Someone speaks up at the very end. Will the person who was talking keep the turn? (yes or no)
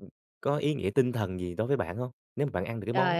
no